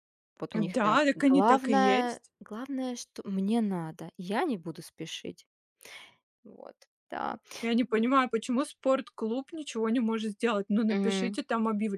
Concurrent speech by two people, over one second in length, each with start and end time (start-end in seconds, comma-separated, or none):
0.8-2.3